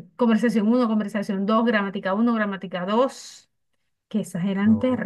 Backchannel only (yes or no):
yes